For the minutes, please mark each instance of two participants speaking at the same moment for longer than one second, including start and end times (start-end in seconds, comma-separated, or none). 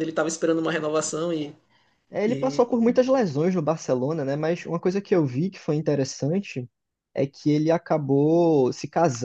none